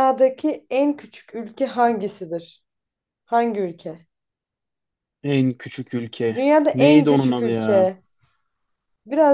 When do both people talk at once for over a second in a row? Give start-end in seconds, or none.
6.3-8.0